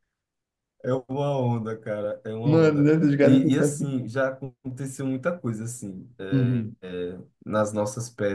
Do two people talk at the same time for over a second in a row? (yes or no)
yes